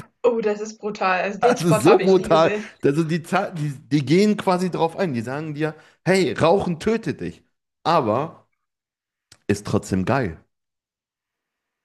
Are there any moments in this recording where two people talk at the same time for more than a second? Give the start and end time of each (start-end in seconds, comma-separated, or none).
1.4-2.7